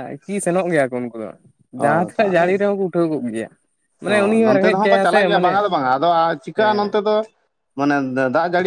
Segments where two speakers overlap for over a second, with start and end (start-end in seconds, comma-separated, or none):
none